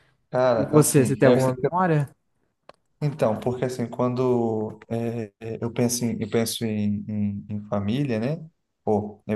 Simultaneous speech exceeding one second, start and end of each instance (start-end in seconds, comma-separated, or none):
0.6-1.8